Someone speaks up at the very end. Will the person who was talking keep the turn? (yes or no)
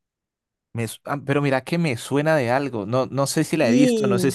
yes